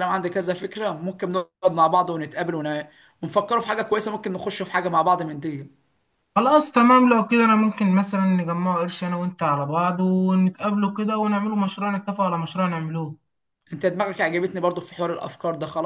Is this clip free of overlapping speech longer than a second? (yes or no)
yes